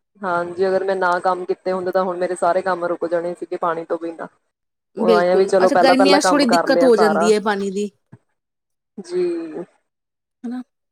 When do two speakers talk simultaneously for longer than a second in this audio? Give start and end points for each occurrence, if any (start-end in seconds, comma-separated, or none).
5.0-7.3